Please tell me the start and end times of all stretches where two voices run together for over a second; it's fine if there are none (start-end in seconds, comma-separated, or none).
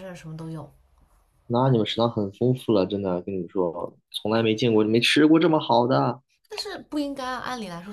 none